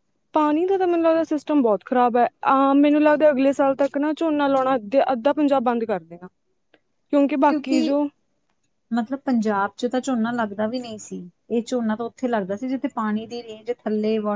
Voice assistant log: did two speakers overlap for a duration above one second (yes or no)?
no